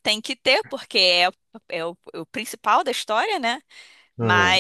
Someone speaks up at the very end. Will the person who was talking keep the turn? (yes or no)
yes